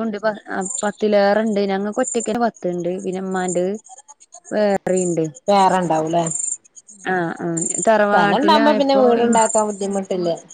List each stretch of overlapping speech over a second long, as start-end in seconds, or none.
none